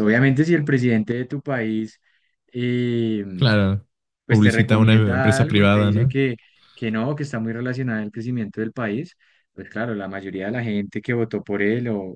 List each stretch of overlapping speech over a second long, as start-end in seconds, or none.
4.3-6.1